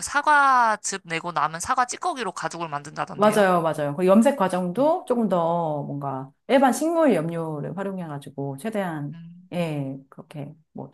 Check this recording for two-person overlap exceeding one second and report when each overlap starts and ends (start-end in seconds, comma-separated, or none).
none